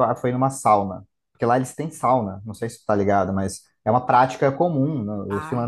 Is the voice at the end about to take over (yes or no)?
no